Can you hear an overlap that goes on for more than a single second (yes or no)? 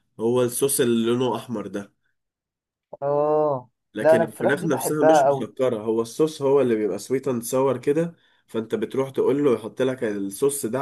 yes